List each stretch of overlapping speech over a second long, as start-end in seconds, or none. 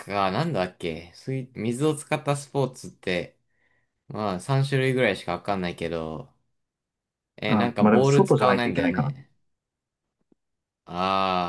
7.5-9.3